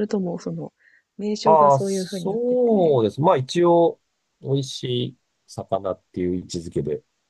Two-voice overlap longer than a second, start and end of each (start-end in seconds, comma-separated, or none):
1.4-3.0